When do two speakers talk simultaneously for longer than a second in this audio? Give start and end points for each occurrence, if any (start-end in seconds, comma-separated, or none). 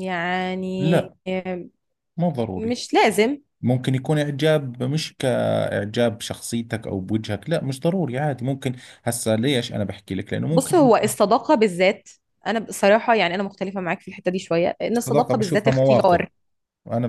14.9-16.2